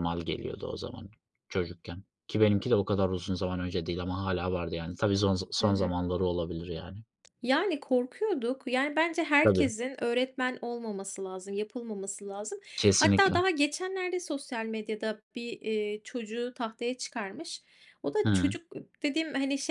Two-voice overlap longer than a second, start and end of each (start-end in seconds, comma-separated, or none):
none